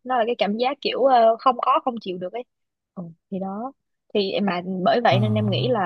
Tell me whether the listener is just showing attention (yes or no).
yes